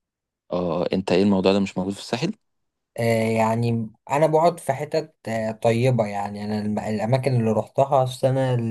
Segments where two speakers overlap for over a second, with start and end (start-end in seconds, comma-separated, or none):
none